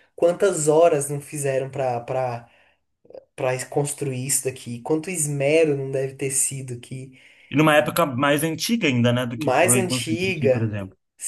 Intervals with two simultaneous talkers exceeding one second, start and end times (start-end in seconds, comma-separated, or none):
9.4-10.7